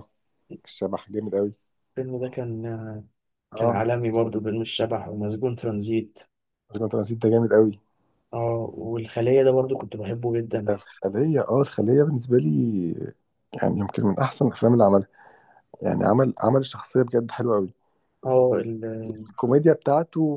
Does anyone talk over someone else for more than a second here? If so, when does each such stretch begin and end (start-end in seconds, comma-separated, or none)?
none